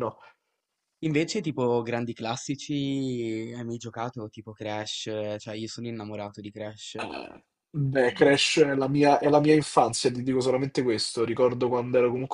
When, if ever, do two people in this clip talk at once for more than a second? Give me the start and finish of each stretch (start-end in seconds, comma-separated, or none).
none